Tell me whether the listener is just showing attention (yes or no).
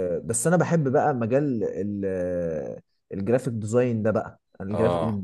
yes